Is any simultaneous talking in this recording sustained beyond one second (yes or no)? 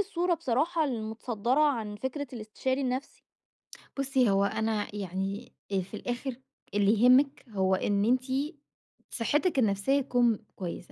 no